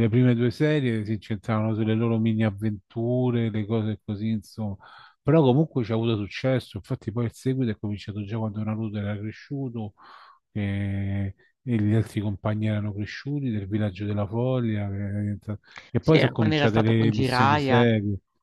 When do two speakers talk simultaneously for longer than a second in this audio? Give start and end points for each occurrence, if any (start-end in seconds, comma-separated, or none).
16.0-17.9